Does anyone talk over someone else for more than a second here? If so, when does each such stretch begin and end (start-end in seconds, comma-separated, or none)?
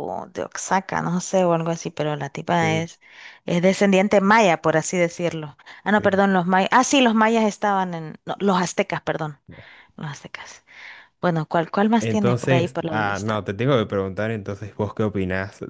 12.0-13.4